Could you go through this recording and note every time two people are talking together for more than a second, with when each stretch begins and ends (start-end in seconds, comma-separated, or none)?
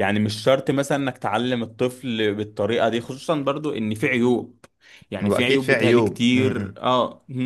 5.2-6.7